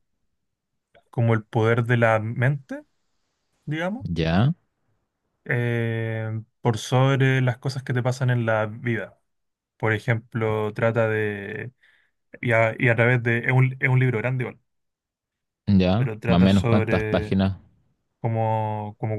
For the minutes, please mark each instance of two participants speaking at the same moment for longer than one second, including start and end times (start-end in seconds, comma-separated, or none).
15.9-17.4